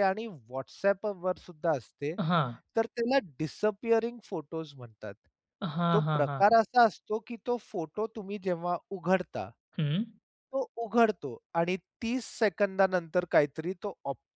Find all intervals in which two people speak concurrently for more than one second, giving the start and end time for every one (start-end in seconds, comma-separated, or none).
none